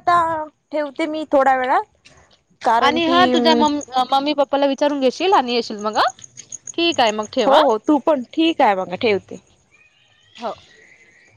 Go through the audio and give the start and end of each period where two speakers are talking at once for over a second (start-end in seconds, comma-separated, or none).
none